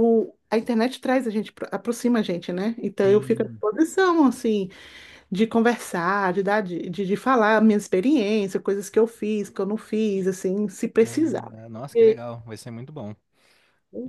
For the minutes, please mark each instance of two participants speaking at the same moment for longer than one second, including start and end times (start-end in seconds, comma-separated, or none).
11.0-12.2